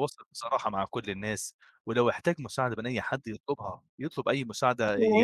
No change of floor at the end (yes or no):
no